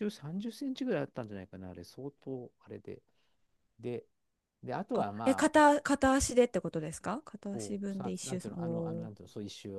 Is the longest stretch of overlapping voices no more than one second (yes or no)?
no